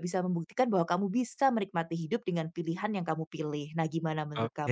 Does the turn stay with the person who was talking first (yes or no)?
no